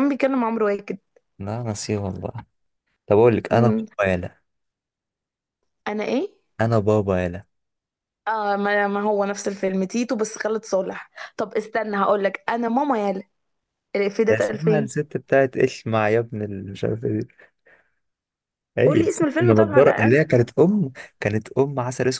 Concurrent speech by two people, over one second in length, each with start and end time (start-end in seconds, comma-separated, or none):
18.9-20.2